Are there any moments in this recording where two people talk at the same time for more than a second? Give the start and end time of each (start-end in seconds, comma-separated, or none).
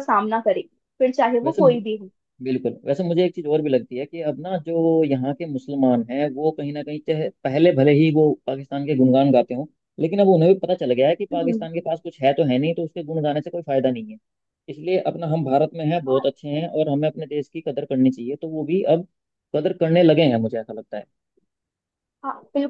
none